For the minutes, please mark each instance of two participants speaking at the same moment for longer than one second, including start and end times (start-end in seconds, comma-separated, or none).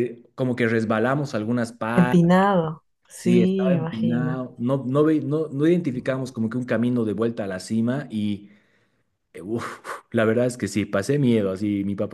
3.1-4.4